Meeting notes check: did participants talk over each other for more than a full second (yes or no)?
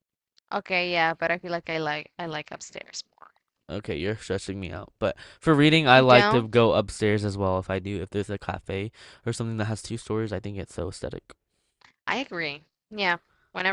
no